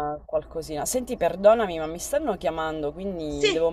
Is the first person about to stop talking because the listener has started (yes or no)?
no